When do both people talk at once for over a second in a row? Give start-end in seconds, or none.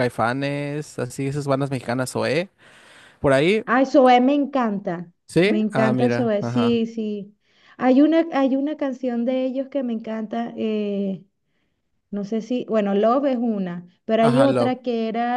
5.3-6.8